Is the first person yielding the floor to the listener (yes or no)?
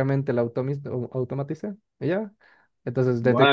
yes